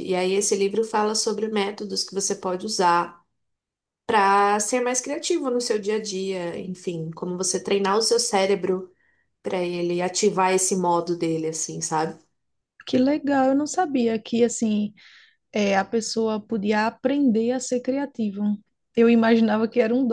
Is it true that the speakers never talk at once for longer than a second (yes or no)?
yes